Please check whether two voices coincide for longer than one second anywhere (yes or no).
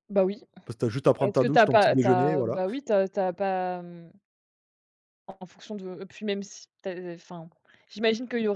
yes